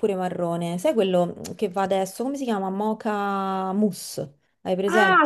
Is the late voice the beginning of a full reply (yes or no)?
yes